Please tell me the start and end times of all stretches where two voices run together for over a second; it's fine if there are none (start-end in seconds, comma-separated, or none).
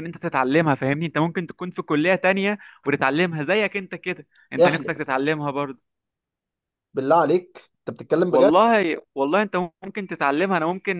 none